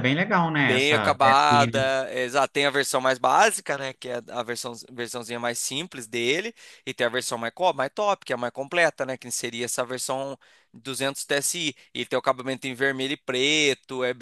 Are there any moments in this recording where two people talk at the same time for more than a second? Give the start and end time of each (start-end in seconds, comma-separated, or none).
0.6-1.8